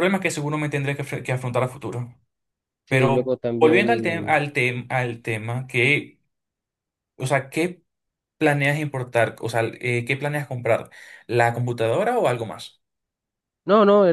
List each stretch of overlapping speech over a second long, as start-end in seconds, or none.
2.9-4.4